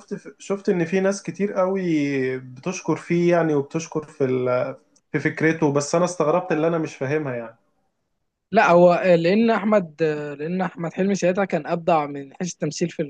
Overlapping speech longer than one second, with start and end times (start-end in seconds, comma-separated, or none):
none